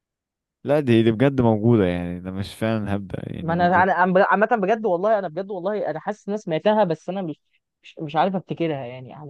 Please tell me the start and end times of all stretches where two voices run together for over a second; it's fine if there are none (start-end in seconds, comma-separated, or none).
none